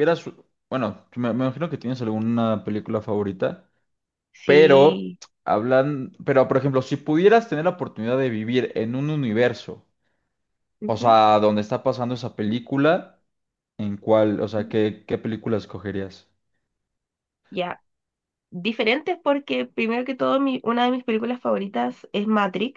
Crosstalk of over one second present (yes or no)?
no